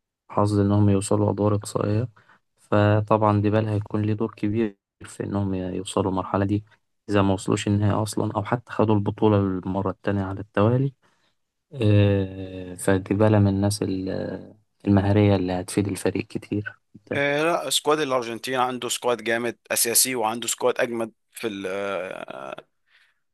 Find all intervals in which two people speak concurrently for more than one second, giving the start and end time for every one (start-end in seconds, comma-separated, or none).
none